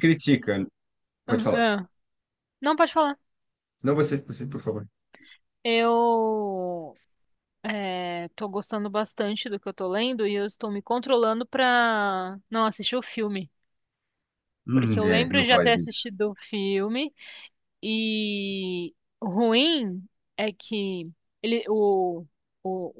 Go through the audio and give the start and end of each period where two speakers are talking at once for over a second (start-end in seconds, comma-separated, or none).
14.7-16.1